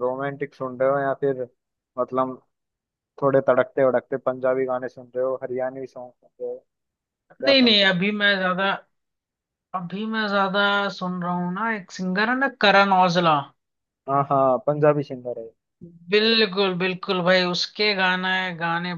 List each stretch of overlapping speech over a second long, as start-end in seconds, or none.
none